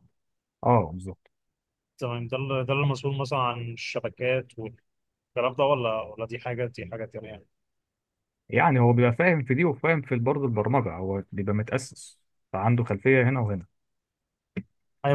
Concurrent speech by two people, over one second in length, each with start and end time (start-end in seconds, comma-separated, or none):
none